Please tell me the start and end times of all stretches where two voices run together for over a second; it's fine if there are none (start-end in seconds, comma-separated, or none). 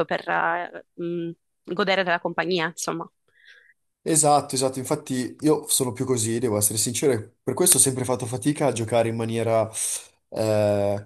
none